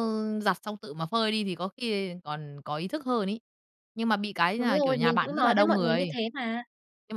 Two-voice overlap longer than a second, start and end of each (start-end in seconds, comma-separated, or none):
4.6-6.2